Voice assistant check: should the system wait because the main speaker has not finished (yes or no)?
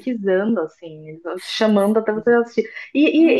yes